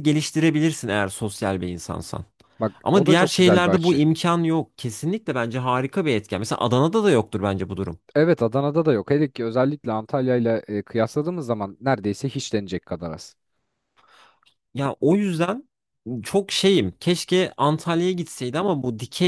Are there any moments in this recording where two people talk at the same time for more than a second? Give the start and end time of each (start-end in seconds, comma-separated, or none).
2.8-4.0